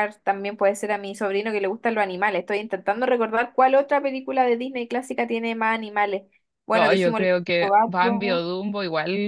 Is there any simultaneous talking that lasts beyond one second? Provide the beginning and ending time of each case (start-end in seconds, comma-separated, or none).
6.7-8.4